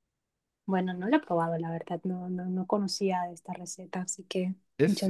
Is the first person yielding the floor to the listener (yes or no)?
yes